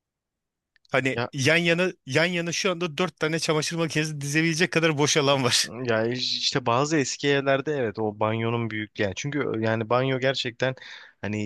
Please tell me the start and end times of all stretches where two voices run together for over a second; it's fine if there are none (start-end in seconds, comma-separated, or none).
none